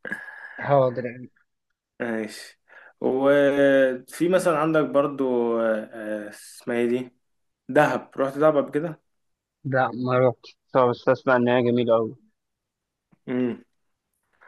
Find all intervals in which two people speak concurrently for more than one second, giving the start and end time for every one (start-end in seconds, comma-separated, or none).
none